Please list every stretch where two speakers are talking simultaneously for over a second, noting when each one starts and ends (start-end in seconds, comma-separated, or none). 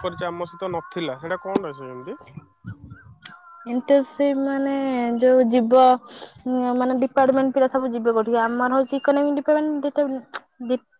none